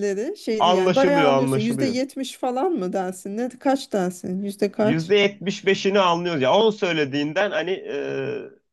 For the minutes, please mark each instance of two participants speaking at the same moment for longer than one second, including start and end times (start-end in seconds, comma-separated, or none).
0.6-2.0